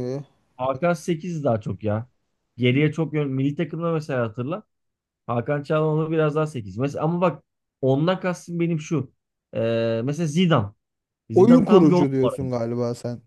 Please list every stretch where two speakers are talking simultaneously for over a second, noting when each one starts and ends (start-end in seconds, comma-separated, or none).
11.3-12.6